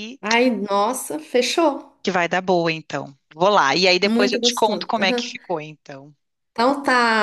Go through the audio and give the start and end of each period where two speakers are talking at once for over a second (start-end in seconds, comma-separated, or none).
4.0-5.3